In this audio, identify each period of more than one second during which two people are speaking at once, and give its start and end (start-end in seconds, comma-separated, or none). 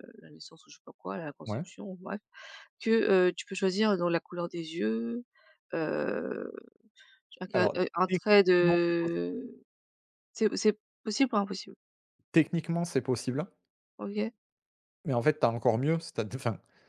7.5-9.4